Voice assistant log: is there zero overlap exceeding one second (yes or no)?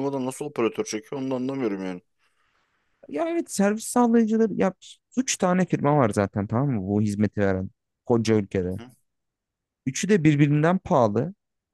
yes